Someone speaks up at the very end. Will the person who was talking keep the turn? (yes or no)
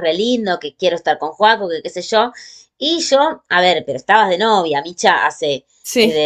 yes